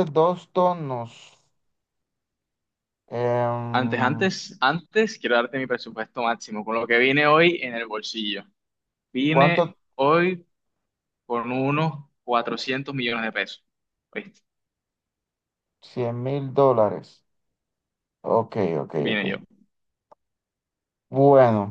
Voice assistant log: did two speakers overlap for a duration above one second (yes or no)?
no